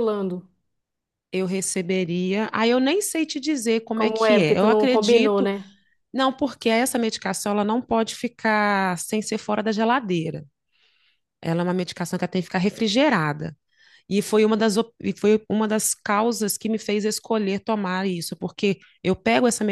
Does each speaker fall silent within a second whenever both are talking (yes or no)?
no